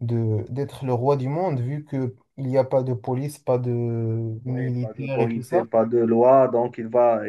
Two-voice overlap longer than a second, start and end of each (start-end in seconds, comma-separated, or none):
4.5-5.7